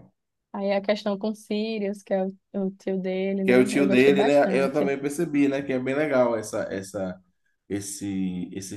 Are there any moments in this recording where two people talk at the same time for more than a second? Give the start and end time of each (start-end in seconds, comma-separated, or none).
3.4-4.9